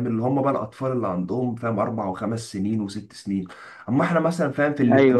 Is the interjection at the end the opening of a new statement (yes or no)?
no